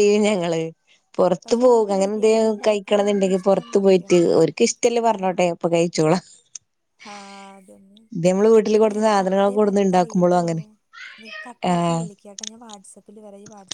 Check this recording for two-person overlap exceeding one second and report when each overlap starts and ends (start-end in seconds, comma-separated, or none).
1.4-4.2, 8.7-10.4